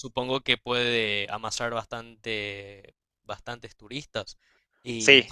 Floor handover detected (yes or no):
no